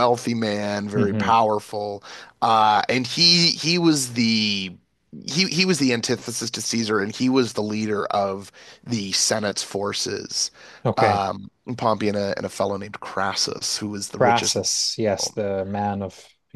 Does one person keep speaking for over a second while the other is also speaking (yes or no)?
yes